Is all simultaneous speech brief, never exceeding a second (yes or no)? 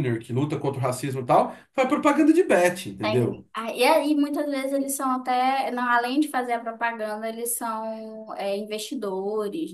yes